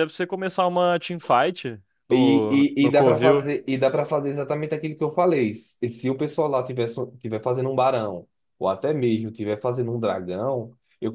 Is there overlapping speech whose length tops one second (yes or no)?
yes